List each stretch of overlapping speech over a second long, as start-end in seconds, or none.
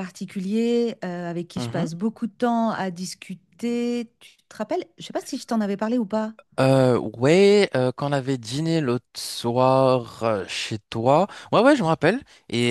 none